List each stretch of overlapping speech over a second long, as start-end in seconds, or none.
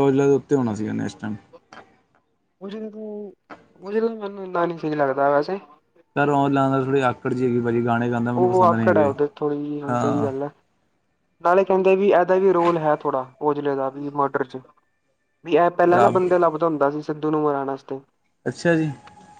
none